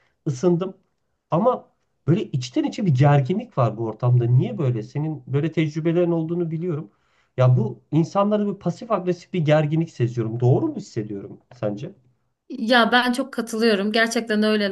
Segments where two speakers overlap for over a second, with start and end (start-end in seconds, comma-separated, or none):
none